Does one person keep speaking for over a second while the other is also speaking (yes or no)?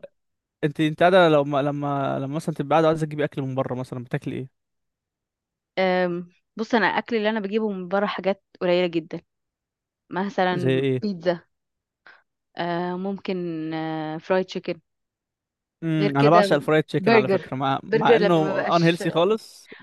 yes